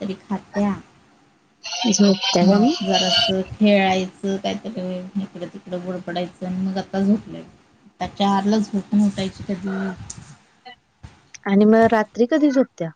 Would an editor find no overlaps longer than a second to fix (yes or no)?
yes